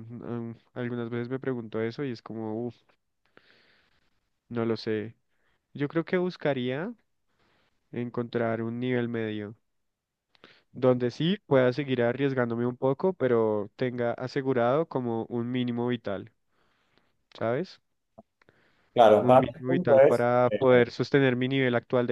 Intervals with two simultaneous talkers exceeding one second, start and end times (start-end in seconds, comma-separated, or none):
19.2-20.8